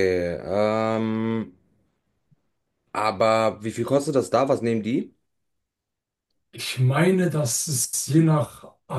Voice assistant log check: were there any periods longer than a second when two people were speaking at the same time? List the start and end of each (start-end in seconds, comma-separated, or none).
none